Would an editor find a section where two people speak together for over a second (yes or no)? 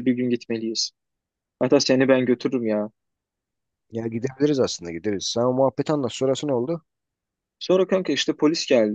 no